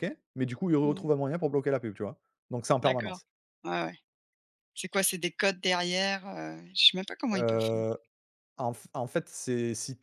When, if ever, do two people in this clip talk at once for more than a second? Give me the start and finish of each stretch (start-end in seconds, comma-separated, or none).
none